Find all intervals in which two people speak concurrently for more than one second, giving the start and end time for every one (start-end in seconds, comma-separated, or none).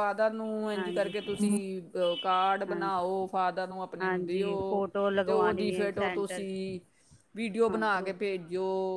5.2-6.7